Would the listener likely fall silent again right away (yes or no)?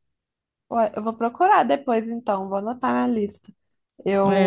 no